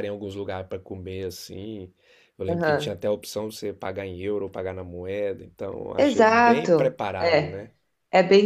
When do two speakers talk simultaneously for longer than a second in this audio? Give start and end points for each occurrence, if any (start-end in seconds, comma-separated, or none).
6.0-7.7